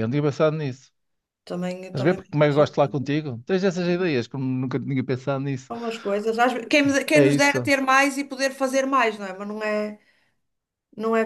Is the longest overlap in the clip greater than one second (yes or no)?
yes